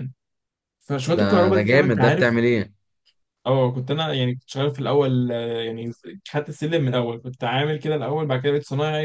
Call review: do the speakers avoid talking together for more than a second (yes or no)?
no